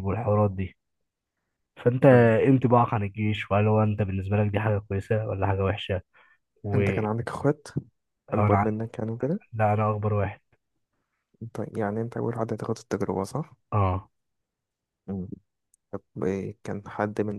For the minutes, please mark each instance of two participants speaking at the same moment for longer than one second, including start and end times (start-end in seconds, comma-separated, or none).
none